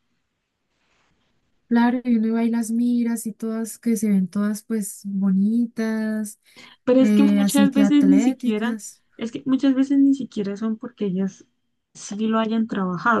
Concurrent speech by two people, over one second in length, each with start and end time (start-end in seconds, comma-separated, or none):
7.0-8.8